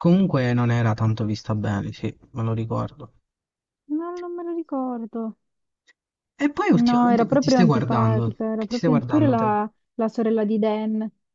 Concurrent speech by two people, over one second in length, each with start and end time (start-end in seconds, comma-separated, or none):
6.7-9.5